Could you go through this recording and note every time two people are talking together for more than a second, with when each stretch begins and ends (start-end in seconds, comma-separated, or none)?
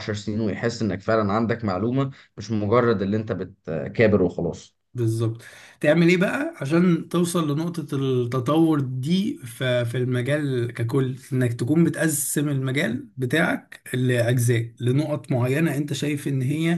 none